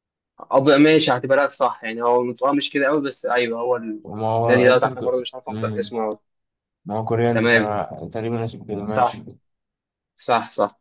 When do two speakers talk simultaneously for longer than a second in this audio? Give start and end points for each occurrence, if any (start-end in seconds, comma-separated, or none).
4.4-5.9